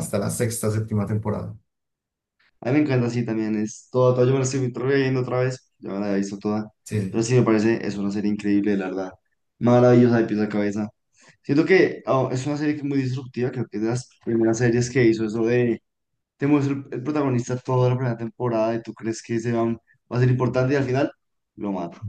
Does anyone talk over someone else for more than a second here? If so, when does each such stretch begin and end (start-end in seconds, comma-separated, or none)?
none